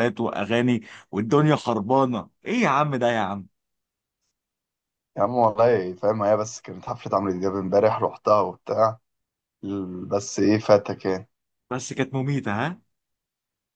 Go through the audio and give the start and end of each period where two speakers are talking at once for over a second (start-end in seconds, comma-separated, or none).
none